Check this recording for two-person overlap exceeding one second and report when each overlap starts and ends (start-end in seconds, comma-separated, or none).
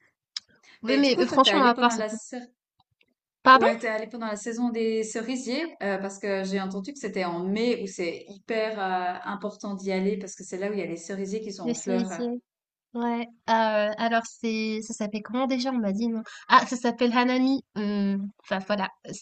0.8-2.1